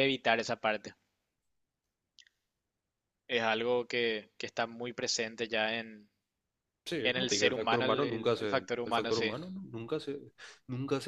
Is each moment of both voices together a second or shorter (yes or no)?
no